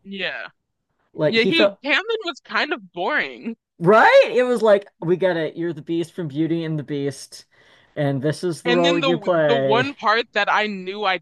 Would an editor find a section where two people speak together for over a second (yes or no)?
yes